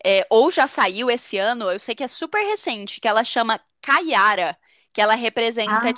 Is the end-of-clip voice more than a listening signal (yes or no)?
no